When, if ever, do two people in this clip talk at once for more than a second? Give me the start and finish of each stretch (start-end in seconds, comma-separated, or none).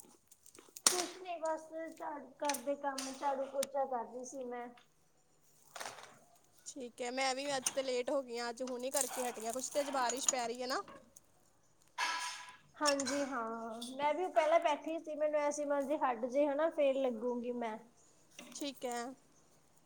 none